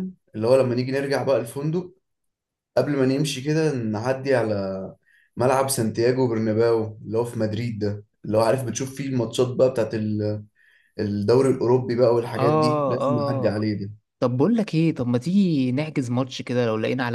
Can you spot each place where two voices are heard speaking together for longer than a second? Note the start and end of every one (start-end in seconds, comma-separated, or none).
12.4-13.6